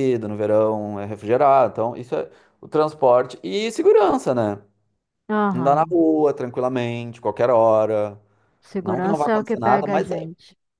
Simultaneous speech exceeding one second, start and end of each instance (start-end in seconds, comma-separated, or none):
8.8-10.3